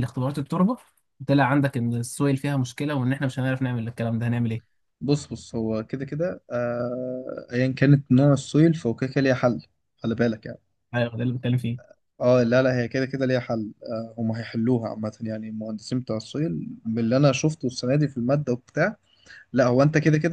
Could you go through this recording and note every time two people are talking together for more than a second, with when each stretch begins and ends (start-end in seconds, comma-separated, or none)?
none